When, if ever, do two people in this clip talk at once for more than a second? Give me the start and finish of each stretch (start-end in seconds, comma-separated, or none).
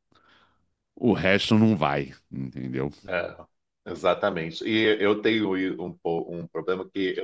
none